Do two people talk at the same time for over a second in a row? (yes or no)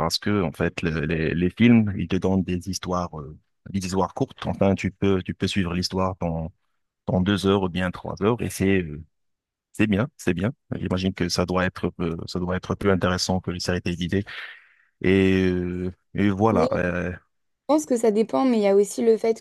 no